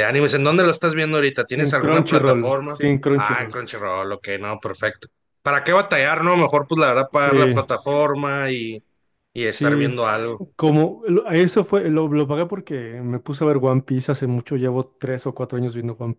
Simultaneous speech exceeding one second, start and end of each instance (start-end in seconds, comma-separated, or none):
1.5-3.6